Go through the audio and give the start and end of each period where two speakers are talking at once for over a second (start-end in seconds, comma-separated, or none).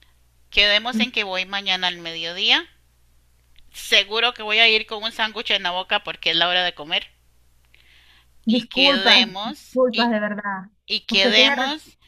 8.5-10.1